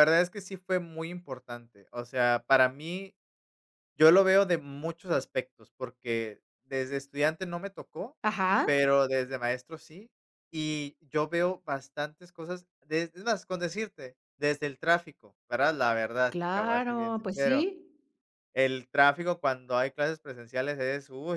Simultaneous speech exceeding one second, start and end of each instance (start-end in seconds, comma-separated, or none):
16.3-17.7